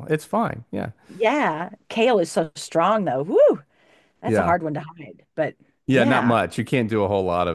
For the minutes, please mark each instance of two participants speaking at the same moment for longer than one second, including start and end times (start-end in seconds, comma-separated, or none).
none